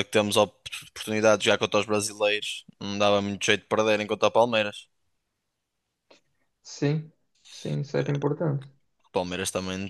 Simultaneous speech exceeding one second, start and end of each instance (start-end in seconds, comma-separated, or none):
none